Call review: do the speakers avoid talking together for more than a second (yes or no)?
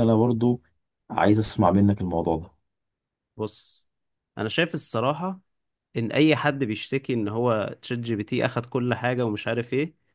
yes